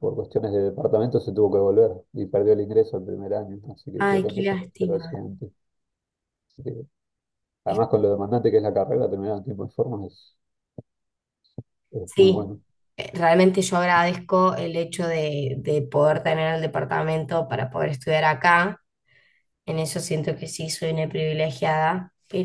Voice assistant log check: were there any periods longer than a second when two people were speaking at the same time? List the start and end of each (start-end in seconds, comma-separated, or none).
4.0-5.2